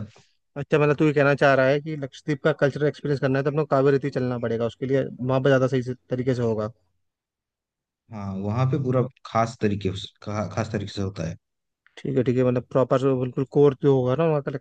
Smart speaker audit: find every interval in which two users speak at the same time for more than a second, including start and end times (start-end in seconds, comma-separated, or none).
none